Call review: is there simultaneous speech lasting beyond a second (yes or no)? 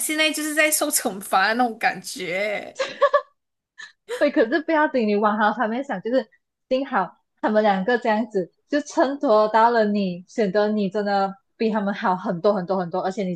no